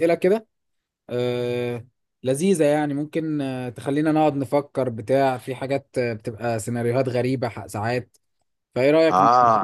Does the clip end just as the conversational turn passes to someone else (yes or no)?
yes